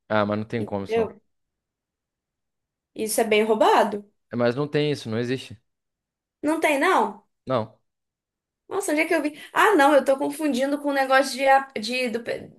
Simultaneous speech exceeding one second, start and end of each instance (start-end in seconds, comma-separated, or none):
none